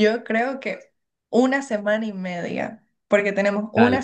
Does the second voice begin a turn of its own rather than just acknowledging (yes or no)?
no